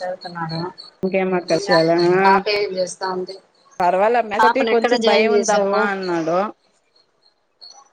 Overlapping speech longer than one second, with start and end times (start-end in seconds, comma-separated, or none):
4.4-5.8